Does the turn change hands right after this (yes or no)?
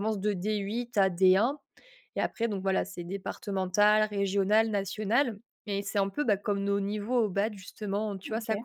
no